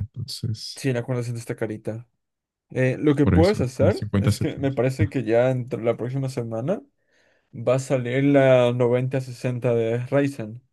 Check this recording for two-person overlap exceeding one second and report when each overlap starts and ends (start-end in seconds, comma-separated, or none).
3.2-4.8